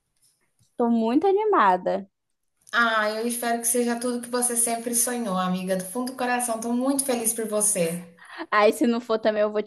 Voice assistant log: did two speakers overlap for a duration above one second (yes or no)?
no